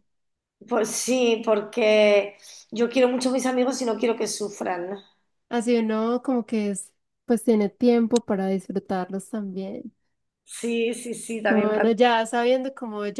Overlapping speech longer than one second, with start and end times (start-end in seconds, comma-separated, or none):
none